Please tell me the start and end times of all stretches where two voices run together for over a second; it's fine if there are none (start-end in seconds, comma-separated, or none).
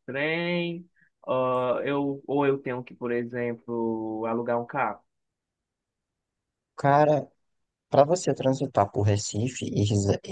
none